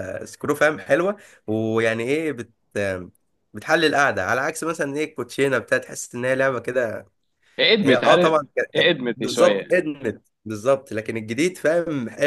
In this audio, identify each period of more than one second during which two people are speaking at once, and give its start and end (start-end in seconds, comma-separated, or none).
7.8-9.8